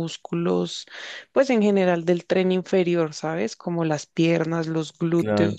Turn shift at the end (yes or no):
no